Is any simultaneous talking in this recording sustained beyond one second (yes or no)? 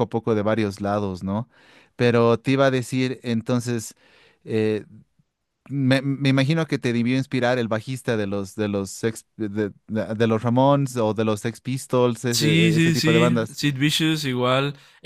yes